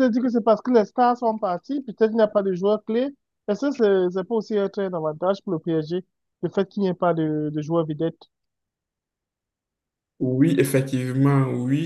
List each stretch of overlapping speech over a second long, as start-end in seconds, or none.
none